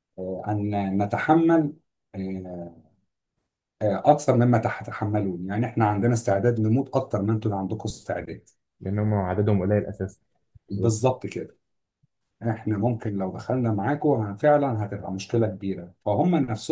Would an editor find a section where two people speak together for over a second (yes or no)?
no